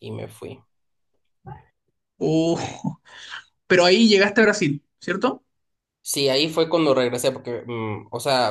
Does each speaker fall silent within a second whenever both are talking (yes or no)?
yes